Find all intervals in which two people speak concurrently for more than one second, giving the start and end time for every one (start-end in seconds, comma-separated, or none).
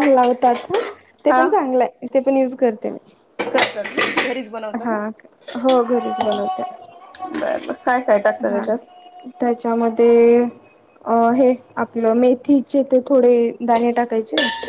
none